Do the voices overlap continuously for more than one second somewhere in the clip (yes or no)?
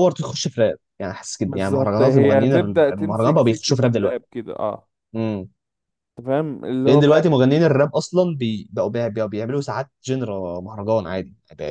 yes